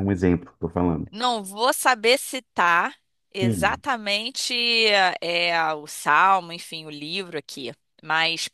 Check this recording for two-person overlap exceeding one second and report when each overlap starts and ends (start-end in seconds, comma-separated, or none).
none